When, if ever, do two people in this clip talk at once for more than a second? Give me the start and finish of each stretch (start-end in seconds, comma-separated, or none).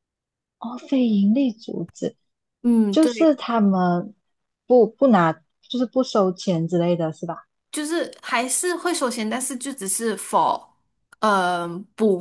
none